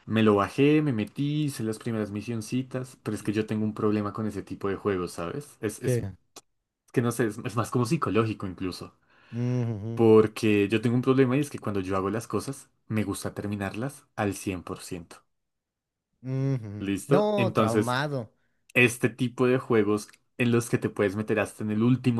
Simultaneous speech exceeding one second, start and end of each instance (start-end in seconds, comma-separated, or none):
16.8-18.0